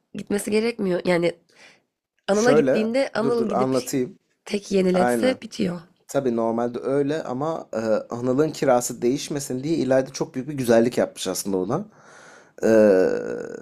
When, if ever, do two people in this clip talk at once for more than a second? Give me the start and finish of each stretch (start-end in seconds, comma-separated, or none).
2.3-3.8